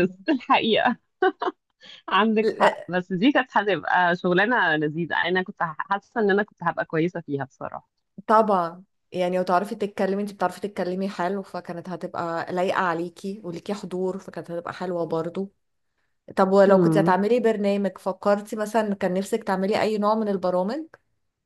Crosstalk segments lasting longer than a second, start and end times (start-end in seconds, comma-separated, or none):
none